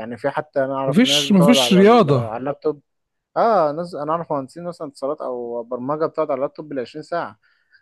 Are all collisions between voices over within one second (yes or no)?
no